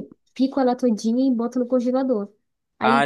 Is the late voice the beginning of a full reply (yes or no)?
no